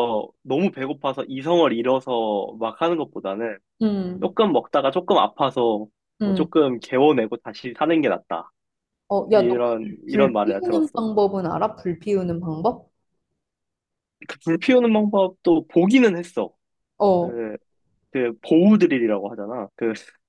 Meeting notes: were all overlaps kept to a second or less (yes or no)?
no